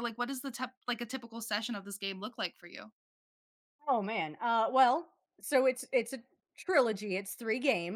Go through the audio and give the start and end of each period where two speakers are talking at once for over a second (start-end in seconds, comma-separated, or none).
none